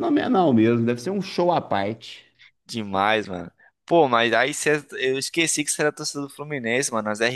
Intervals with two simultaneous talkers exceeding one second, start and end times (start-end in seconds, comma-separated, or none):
none